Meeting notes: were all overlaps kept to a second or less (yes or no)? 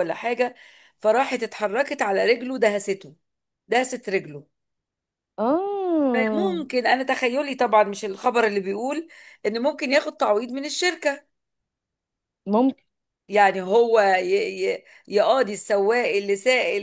yes